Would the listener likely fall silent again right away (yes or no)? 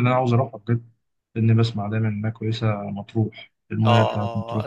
no